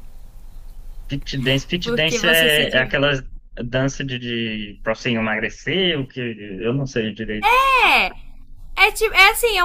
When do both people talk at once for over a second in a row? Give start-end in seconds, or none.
1.8-3.0